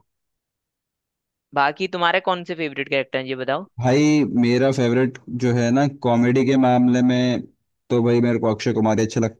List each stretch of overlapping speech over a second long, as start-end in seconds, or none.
none